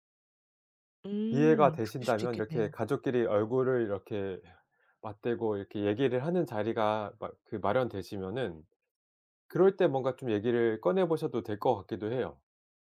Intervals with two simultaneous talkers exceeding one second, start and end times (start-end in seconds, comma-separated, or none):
1.3-2.7